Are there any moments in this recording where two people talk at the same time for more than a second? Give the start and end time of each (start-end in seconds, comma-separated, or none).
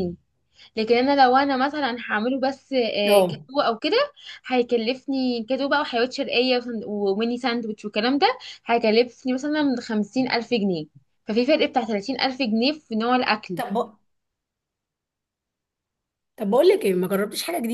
none